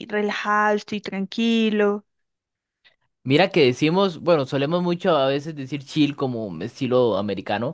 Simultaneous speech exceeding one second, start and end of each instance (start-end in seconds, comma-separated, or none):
none